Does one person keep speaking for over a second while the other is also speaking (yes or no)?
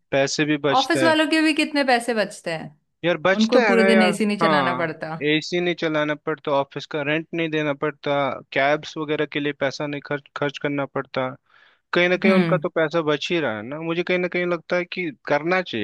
yes